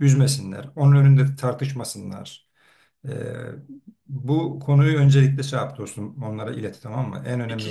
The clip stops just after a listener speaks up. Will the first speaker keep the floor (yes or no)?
no